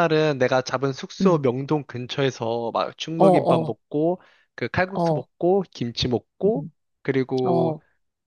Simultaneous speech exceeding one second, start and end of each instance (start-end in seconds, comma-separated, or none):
none